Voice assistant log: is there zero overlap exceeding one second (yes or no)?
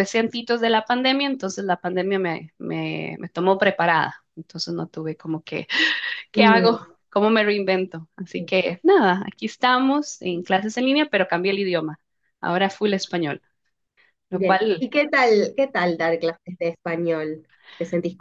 yes